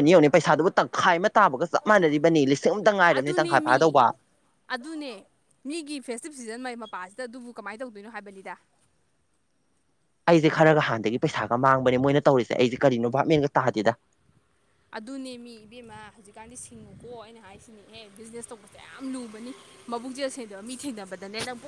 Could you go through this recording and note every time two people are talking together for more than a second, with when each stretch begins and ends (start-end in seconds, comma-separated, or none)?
none